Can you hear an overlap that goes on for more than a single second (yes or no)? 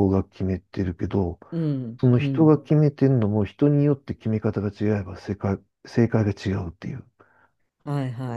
no